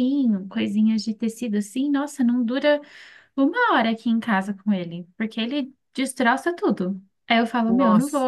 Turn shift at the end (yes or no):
no